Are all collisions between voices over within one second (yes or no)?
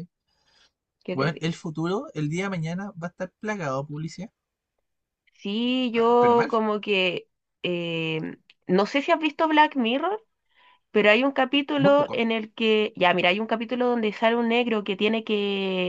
yes